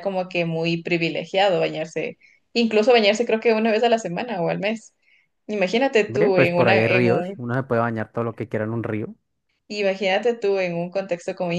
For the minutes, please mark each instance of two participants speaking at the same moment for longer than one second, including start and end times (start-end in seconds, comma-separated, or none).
6.1-7.4